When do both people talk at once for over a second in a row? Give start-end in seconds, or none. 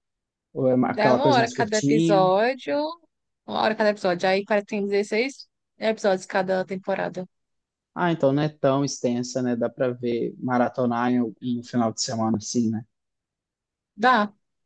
0.9-2.3